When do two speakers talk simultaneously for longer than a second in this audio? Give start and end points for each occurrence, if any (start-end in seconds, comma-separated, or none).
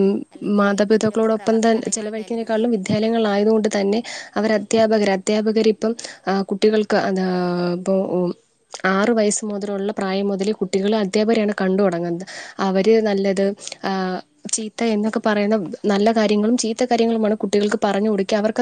0.6-2.7